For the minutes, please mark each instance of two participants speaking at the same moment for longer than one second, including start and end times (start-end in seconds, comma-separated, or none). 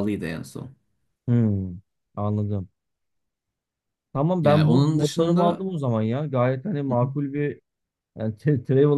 4.4-5.7